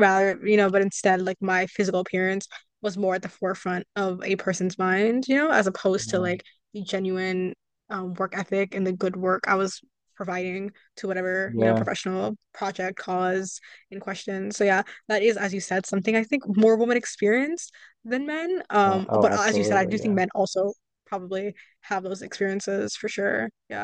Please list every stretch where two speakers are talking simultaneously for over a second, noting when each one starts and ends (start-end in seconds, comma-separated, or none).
18.8-20.2